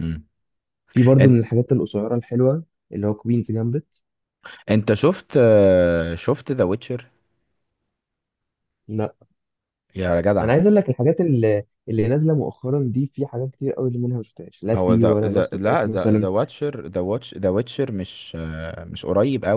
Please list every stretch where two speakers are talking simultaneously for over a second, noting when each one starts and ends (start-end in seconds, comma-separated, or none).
14.7-16.3